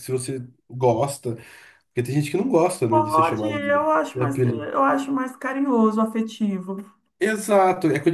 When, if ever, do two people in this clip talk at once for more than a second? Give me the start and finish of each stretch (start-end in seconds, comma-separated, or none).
2.9-4.7